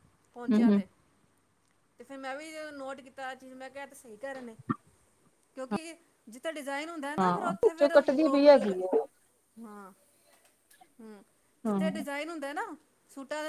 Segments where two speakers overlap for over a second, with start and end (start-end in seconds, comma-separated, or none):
7.2-8.8